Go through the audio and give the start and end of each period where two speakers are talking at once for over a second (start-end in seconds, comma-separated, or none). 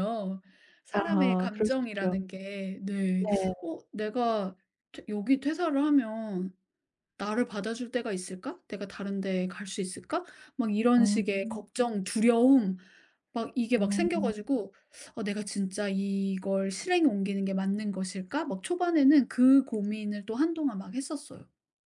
0.9-2.2